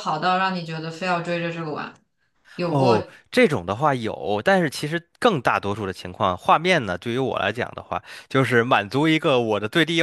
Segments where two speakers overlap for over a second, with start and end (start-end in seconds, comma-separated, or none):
none